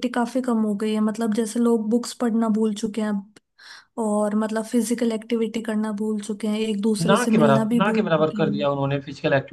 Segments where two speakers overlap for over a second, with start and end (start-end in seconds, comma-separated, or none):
7.1-8.7